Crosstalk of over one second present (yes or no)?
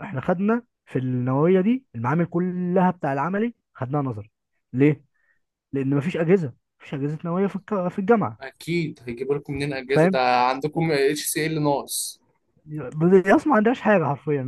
no